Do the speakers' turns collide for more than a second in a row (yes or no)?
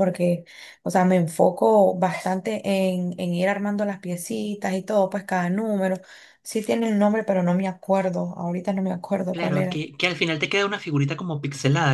no